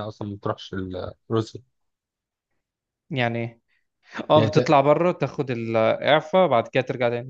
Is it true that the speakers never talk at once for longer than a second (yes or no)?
yes